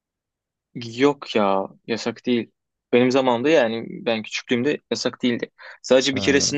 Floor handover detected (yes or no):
no